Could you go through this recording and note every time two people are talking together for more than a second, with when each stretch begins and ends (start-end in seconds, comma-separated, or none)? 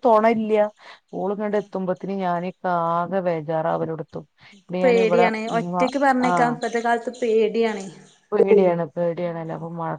none